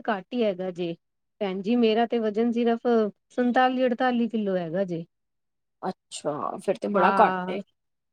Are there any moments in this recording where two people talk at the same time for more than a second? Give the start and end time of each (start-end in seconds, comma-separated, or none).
none